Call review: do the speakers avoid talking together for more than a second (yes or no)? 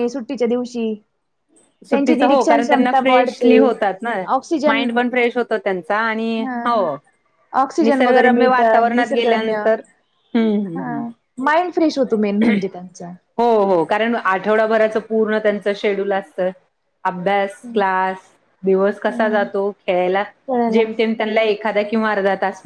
no